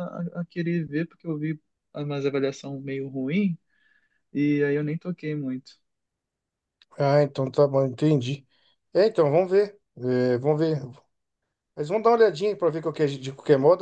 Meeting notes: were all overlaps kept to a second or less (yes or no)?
yes